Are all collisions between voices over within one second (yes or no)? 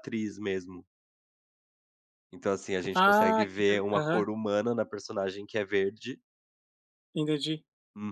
no